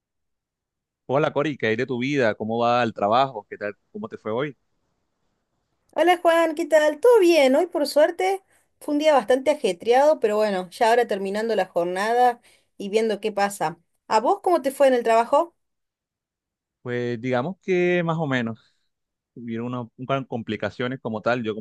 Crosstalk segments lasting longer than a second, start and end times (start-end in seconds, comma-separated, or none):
none